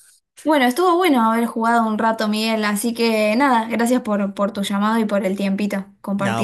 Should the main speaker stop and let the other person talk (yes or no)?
yes